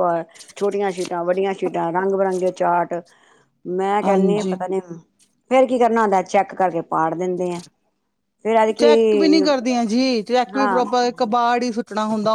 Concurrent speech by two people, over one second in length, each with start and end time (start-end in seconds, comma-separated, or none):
none